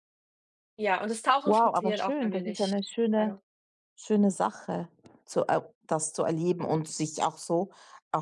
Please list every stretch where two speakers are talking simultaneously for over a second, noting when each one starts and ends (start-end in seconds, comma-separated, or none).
1.4-3.4